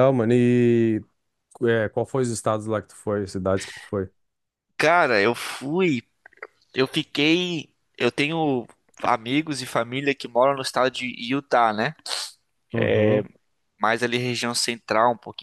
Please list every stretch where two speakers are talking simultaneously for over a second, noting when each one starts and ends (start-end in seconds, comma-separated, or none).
none